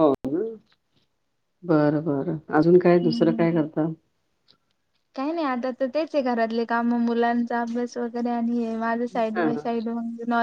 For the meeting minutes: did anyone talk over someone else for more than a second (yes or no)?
no